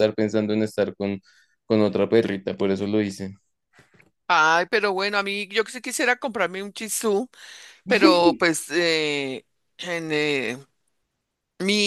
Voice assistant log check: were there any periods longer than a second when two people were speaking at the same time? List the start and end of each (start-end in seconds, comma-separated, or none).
none